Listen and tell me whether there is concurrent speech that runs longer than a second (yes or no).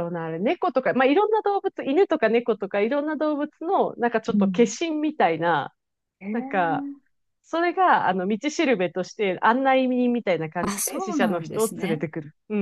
yes